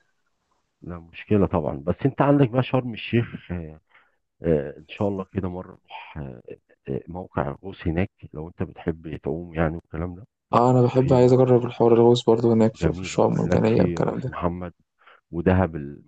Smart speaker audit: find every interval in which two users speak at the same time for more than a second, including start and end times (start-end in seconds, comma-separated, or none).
12.8-14.3